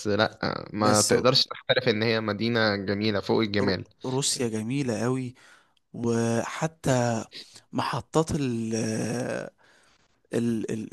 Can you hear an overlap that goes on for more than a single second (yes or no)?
no